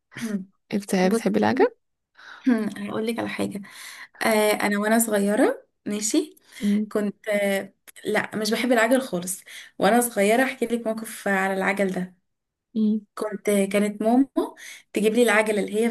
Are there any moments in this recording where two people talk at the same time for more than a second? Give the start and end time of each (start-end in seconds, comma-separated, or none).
none